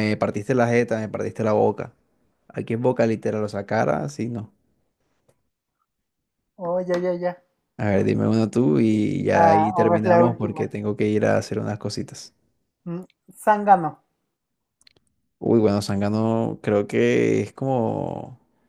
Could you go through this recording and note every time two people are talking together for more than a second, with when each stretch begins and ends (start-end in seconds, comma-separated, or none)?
9.3-10.7